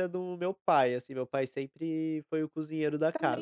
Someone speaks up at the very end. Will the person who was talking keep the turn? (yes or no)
no